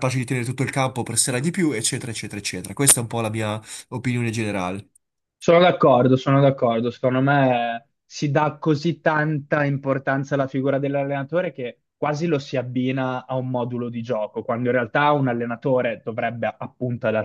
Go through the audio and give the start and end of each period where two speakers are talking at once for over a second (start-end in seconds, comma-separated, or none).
none